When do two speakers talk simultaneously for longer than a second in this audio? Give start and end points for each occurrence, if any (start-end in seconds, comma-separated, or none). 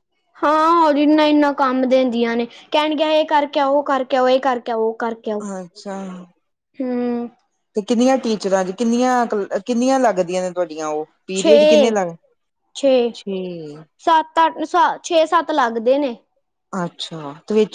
none